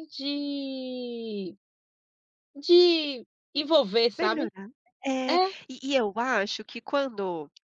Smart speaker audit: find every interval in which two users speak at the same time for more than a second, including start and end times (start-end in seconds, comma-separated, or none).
none